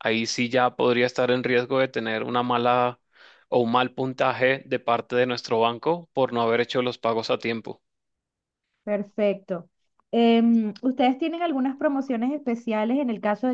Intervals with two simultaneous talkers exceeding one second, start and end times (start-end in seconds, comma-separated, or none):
none